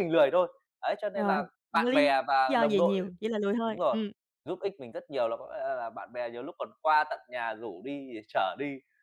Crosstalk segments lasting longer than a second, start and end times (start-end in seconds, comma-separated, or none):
1.1-3.0